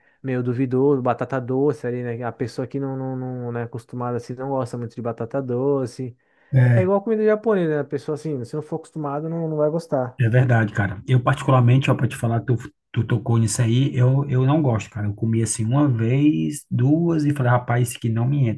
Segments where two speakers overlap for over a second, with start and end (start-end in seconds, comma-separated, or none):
none